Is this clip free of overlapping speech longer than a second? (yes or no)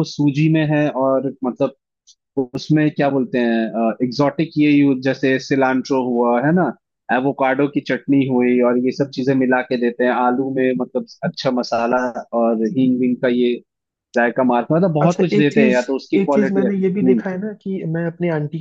no